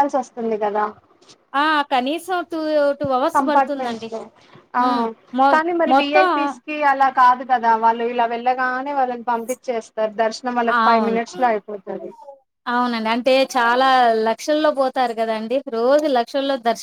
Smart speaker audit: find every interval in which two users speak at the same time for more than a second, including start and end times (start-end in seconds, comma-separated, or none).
none